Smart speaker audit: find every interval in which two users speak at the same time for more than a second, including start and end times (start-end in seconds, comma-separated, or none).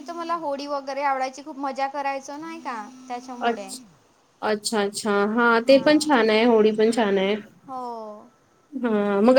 none